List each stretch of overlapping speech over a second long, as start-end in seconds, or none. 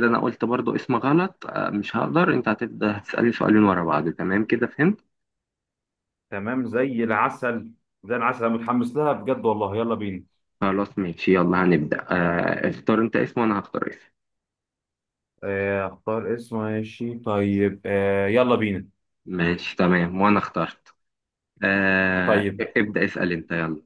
none